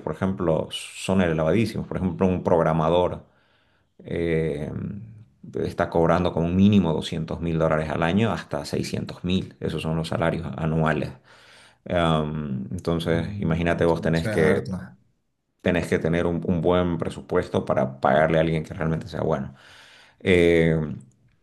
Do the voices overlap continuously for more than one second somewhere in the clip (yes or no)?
yes